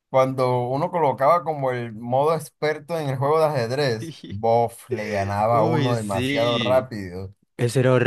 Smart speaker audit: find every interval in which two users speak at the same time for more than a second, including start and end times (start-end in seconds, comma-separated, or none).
5.5-6.9